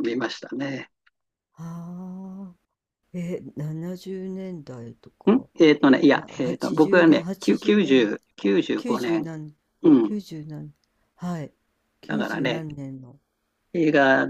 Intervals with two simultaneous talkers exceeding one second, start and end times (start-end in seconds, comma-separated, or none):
6.2-8.1